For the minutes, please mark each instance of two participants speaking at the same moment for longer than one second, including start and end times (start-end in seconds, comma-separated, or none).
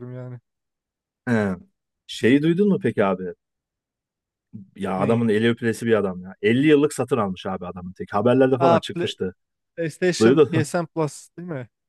none